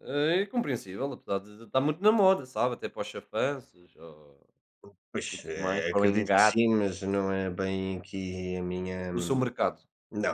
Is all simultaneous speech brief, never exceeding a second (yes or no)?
no